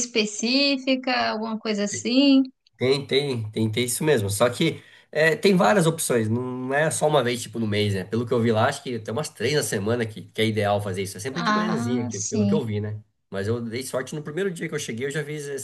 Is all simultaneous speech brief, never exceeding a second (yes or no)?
no